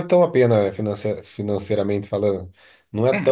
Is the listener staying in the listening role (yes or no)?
yes